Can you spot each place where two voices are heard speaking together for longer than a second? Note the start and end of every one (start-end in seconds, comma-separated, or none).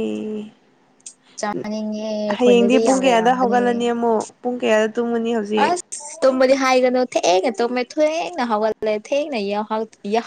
2.4-3.8